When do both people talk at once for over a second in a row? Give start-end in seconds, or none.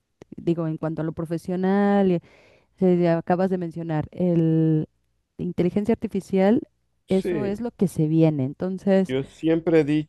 none